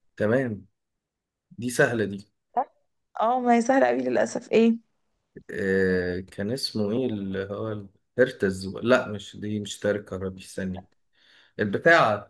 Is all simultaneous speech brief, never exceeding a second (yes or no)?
yes